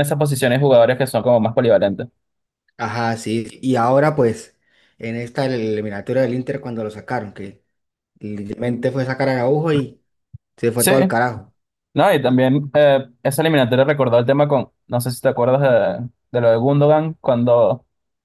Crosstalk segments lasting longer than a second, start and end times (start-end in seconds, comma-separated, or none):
none